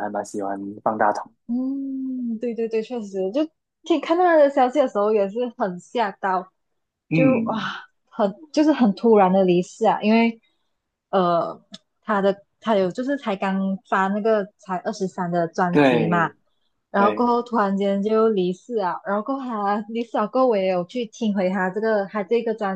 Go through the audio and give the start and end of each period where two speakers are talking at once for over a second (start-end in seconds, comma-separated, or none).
none